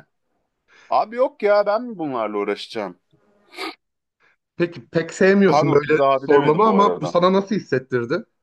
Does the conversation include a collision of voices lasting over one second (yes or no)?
yes